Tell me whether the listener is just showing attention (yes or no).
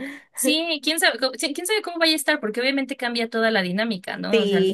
yes